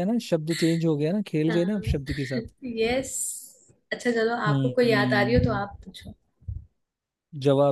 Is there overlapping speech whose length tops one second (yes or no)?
yes